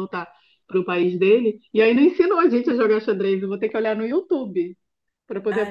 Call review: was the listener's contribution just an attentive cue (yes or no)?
no